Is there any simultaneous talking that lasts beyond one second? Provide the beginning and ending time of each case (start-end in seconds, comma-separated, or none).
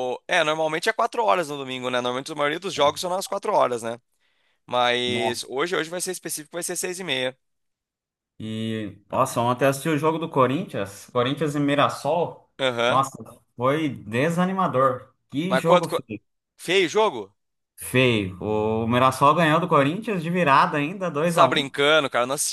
none